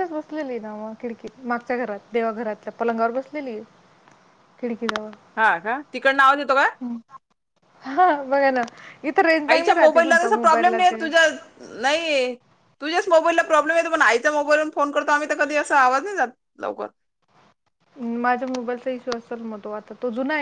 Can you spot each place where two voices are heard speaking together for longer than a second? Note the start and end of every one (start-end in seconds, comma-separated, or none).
9.5-11.1